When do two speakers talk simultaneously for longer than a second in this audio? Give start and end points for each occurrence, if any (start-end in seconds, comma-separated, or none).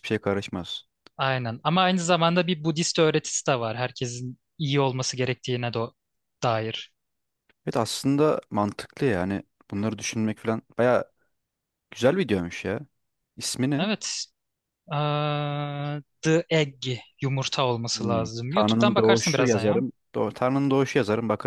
17.9-19.9